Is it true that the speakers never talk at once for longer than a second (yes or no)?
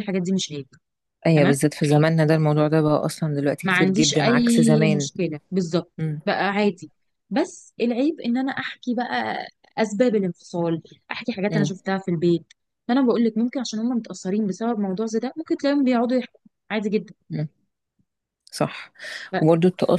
no